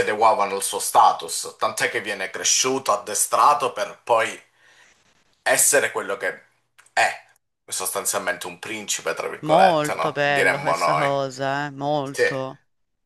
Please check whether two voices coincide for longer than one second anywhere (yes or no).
yes